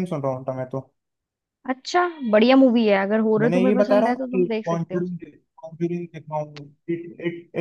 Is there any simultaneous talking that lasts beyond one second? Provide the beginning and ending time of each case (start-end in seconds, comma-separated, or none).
3.4-5.0